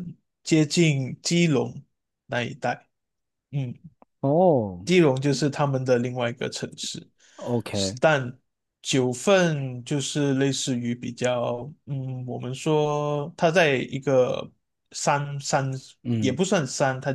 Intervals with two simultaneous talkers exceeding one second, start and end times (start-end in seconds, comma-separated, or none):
none